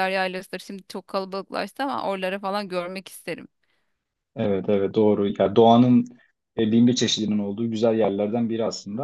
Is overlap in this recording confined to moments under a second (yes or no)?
yes